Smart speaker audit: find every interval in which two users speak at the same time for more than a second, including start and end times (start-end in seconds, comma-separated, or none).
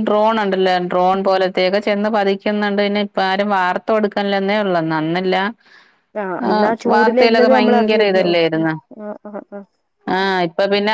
6.5-8.7